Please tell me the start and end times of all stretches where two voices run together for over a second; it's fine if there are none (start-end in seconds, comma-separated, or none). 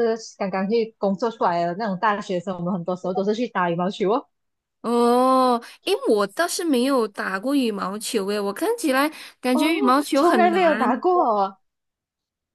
9.5-11.0